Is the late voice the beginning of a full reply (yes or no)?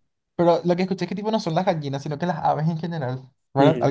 yes